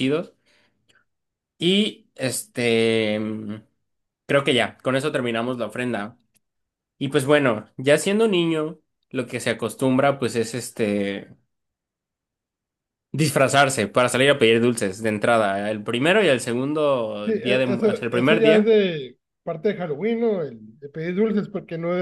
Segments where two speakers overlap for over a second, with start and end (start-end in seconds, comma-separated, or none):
17.2-18.8